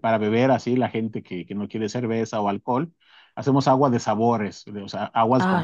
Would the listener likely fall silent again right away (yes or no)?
no